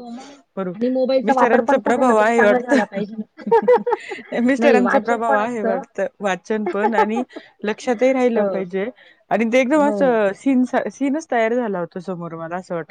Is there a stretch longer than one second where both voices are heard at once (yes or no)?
yes